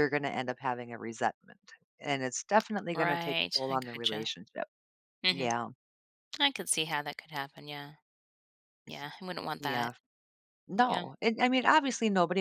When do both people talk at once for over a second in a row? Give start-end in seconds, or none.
2.9-4.3